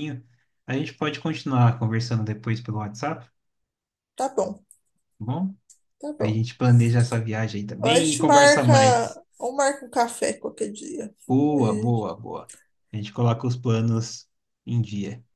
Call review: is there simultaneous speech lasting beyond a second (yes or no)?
yes